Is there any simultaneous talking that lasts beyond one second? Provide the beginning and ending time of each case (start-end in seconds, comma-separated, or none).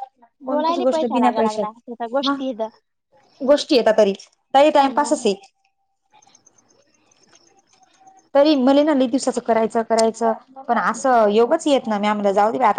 0.5-2.4